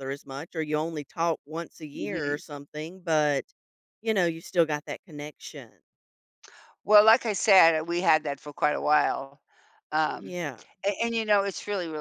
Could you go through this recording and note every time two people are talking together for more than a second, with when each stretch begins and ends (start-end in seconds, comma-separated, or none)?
none